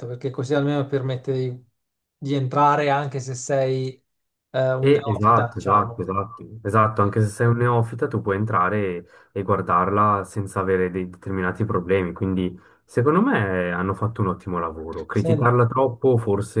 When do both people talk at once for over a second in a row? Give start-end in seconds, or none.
4.8-6.1